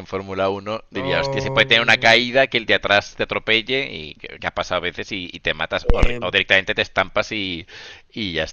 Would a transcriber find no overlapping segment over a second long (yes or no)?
no